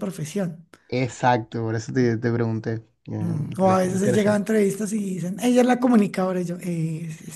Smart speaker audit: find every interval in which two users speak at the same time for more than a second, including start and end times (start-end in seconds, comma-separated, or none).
3.2-4.5